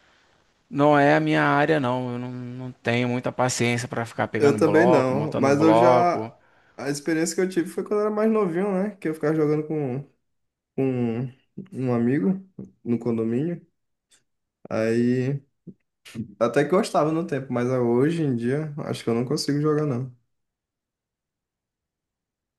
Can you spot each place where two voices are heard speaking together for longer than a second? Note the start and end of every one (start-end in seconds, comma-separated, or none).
4.4-6.2